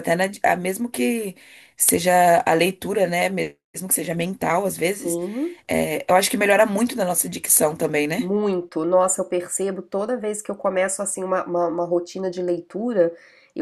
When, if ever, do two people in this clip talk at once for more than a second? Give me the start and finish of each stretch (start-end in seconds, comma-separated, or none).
none